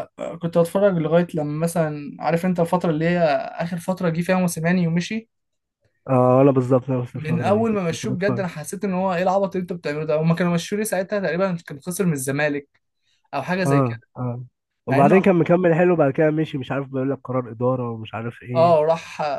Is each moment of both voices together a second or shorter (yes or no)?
no